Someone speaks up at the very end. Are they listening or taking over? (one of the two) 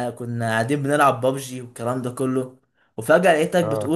listening